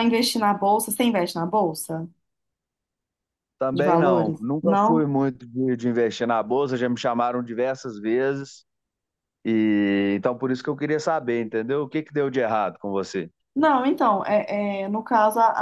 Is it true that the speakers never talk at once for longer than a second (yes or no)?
no